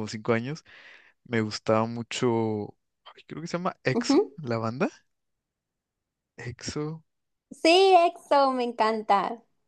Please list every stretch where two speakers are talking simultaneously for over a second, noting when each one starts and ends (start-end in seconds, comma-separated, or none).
none